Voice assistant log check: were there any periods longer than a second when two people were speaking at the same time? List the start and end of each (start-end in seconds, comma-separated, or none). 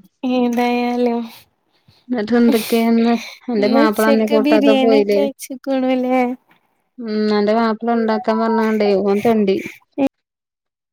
3.6-5.2